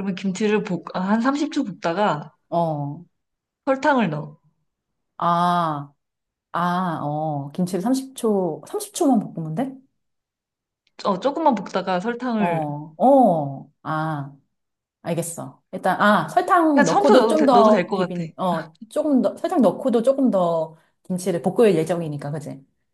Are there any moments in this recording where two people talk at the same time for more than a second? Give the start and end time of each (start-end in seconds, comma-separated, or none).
16.7-18.1